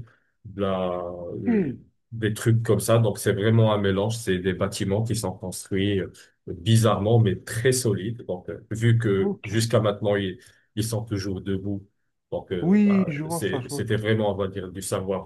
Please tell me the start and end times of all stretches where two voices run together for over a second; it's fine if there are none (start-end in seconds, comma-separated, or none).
12.6-13.9